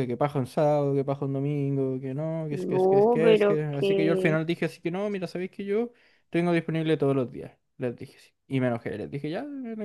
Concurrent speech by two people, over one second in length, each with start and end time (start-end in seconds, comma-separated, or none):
2.5-4.4